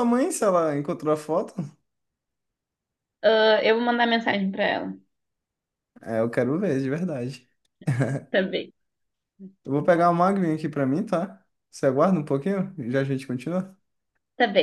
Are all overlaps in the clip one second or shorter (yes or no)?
yes